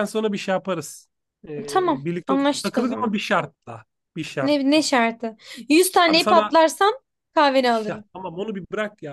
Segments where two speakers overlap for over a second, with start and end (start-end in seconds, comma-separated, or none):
1.7-3.2